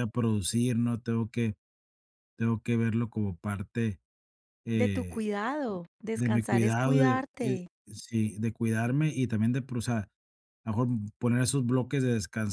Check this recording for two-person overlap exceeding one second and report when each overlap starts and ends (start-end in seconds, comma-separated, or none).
6.1-7.7